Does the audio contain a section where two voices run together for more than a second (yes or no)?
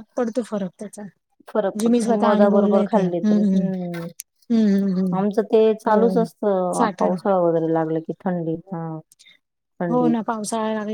yes